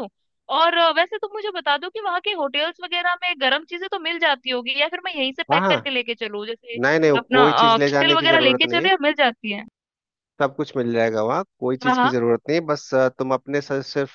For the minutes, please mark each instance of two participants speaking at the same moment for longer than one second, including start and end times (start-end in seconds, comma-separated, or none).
7.2-8.9